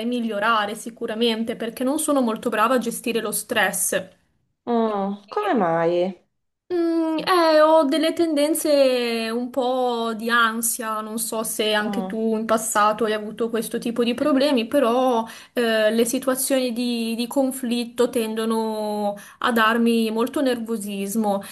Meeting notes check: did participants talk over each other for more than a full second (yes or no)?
no